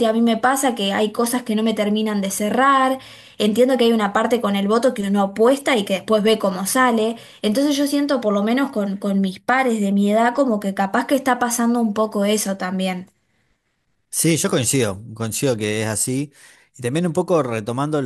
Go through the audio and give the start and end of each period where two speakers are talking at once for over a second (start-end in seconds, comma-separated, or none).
none